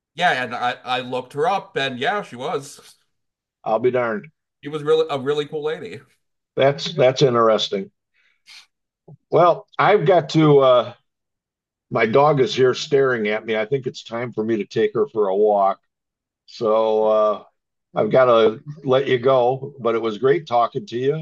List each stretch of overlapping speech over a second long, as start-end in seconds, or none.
none